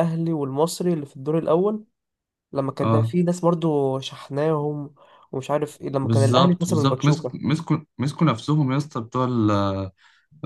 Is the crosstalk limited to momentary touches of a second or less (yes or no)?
no